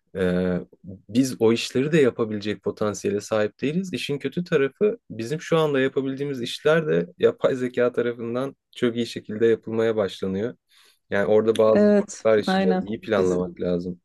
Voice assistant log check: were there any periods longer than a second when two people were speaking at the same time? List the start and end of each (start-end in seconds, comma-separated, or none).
11.7-13.4